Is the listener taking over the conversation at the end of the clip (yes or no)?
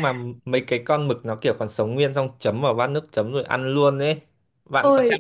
yes